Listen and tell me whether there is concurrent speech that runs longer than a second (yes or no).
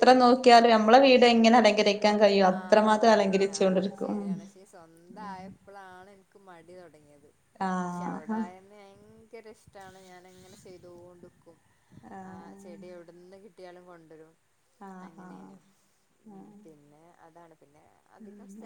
yes